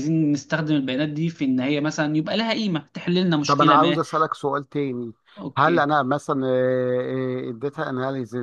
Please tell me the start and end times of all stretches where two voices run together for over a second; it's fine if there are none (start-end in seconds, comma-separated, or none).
none